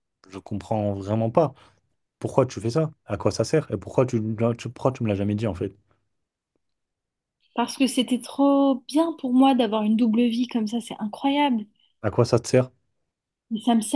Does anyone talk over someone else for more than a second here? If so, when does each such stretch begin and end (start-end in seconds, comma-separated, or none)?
none